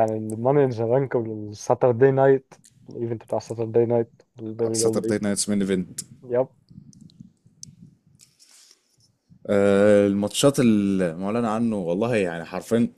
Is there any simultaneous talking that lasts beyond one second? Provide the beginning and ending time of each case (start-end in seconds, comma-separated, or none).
none